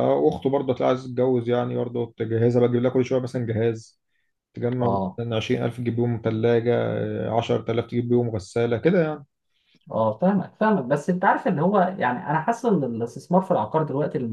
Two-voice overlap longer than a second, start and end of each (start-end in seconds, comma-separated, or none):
none